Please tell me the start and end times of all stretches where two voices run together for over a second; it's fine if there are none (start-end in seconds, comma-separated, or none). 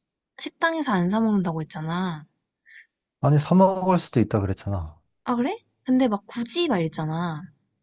none